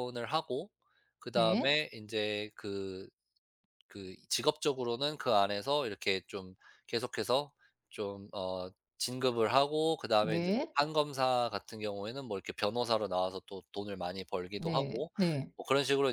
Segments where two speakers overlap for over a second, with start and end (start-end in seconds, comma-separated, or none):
none